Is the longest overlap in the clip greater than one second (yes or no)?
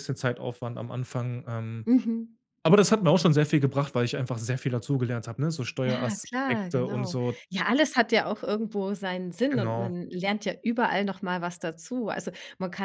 yes